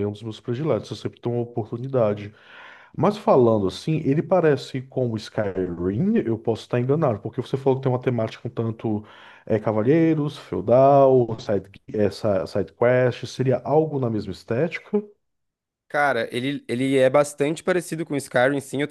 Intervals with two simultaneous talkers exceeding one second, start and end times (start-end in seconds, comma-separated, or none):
none